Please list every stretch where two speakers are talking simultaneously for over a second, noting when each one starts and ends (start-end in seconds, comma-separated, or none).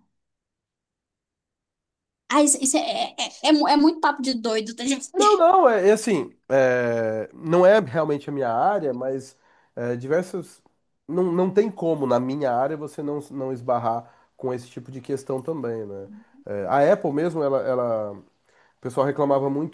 none